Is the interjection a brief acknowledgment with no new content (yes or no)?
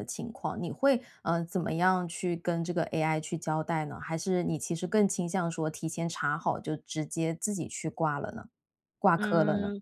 no